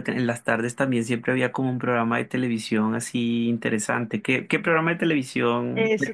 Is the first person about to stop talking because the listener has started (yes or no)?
yes